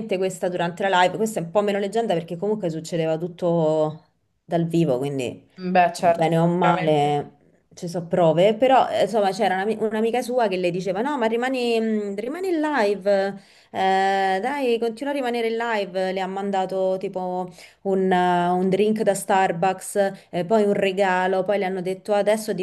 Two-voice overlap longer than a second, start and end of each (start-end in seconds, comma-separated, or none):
6.0-7.2